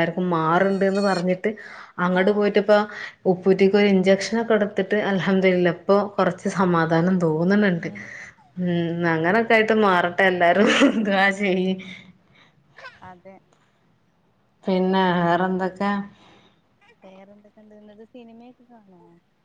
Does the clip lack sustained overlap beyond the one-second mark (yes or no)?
yes